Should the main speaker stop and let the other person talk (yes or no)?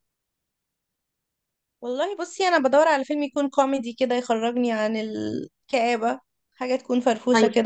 yes